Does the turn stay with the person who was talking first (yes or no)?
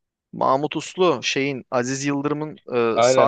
no